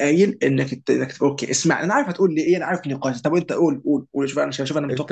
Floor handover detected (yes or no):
yes